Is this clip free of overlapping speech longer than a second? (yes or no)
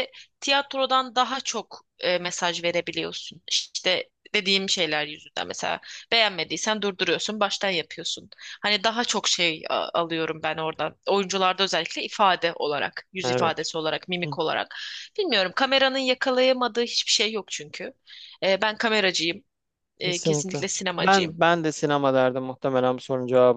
no